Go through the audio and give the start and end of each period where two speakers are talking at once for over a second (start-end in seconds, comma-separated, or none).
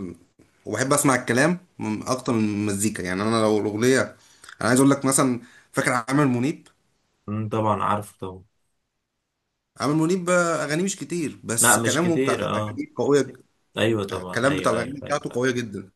11.6-12.8, 14.1-15.4